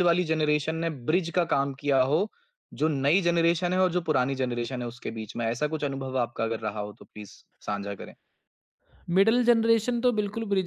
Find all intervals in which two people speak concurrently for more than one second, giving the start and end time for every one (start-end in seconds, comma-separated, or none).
none